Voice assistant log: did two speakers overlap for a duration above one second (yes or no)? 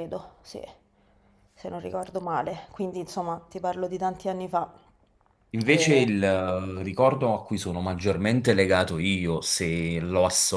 no